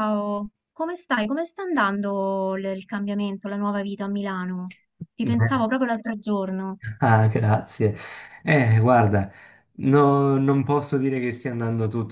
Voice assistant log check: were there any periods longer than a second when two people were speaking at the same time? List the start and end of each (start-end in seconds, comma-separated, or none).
none